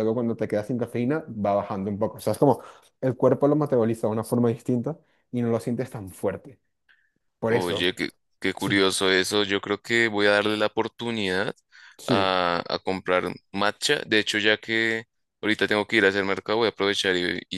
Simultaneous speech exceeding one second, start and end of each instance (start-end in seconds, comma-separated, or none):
none